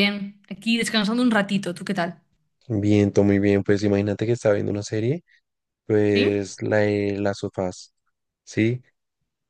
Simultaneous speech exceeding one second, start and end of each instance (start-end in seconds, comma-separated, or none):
none